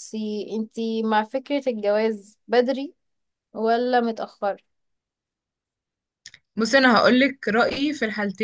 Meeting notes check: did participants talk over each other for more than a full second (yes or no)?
no